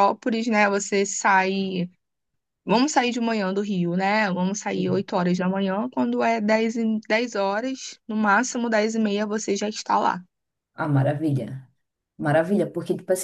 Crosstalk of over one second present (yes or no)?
no